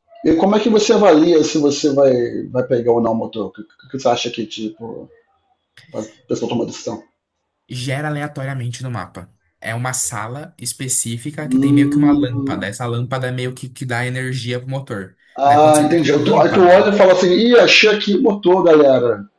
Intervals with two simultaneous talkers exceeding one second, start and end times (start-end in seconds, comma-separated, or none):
11.4-12.7, 15.4-16.9